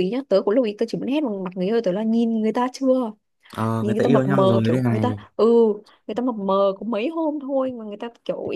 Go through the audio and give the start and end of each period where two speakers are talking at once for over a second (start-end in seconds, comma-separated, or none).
3.8-5.2